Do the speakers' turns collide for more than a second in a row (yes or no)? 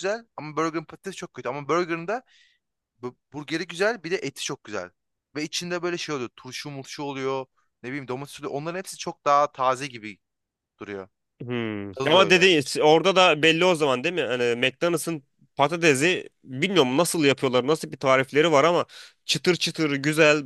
no